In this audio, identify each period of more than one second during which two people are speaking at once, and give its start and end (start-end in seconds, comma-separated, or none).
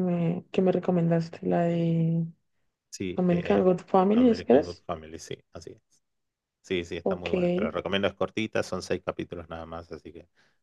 3.1-4.8